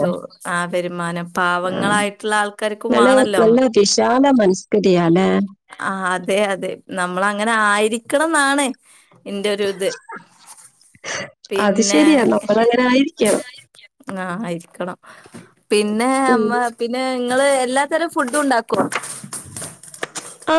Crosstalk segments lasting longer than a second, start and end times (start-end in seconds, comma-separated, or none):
none